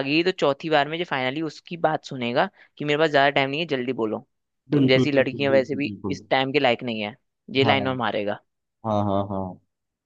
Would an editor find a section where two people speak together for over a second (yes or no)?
yes